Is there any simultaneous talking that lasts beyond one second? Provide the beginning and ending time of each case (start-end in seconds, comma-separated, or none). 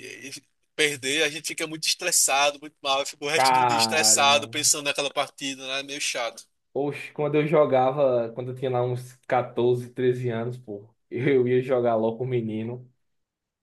3.3-4.5